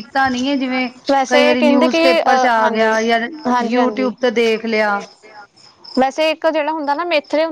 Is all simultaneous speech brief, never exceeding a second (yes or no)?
no